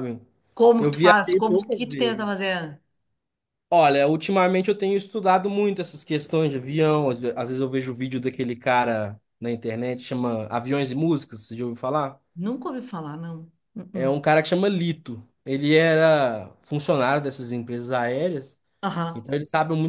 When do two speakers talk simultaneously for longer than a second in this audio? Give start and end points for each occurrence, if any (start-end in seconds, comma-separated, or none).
0.8-2.3